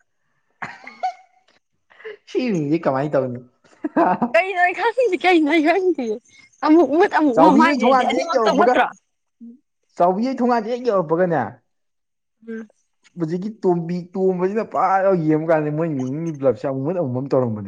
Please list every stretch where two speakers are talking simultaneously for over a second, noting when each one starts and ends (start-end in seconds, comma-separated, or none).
7.3-8.7